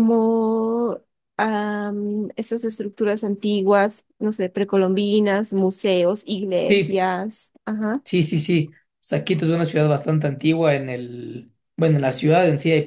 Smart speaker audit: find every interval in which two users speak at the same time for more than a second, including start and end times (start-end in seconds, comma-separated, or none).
none